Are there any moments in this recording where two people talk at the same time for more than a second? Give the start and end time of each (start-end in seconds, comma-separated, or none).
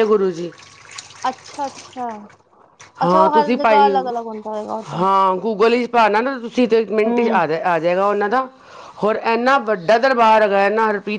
none